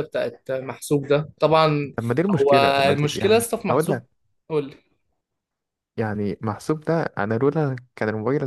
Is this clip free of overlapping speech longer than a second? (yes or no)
no